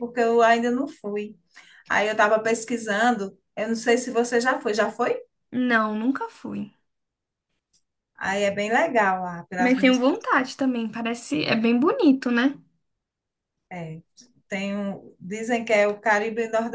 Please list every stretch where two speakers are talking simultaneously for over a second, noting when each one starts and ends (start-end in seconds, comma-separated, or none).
none